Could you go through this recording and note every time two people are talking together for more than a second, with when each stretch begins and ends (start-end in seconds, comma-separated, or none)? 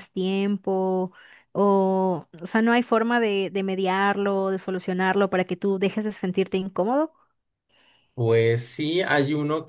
none